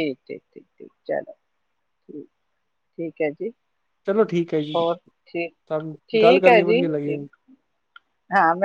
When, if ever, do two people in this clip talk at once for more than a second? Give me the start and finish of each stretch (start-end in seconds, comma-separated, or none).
5.5-7.2